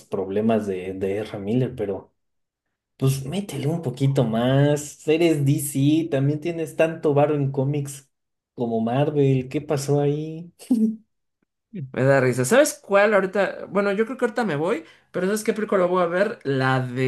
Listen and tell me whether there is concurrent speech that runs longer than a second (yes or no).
no